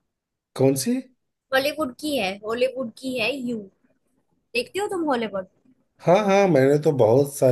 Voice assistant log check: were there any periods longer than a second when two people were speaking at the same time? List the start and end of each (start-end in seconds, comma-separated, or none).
none